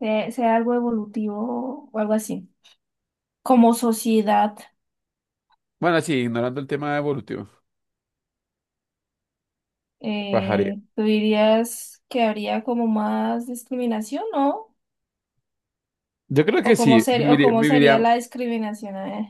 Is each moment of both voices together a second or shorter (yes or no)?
no